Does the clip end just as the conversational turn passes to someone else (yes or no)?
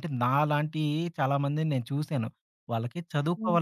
no